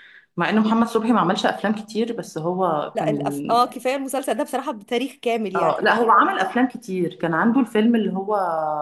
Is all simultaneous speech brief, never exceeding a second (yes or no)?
yes